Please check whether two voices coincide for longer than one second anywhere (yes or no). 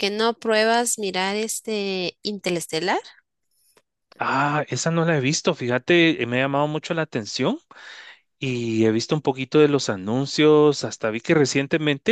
no